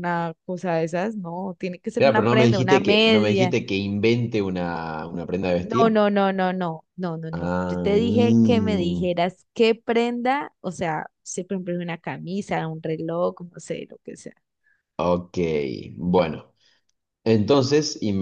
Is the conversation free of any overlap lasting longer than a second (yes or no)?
no